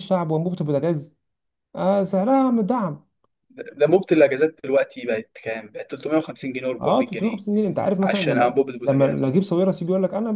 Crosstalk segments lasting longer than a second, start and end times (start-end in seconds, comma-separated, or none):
8.0-9.3